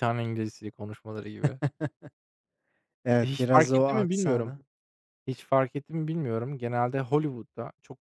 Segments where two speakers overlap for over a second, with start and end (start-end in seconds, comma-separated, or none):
3.2-4.5